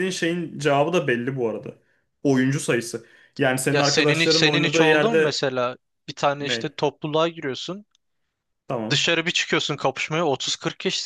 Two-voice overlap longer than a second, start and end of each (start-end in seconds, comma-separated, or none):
3.7-5.4